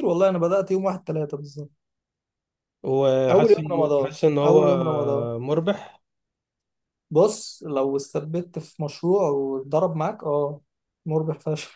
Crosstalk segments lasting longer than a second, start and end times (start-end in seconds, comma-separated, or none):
3.3-4.8